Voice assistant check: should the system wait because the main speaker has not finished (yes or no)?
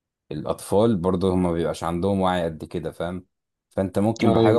yes